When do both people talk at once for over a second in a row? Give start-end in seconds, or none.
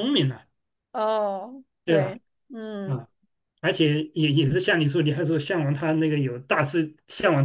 none